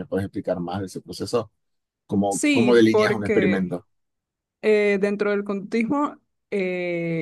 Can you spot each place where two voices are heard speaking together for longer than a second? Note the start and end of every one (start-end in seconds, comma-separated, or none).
2.3-3.7